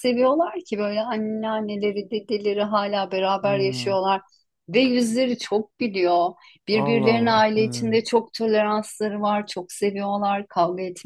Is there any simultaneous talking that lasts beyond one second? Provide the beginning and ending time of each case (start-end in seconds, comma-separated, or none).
6.7-7.9